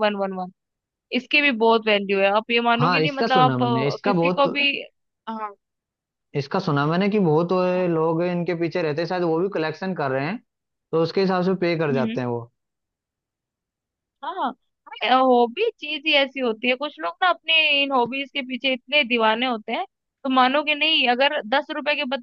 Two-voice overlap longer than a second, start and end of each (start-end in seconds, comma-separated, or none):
2.8-4.4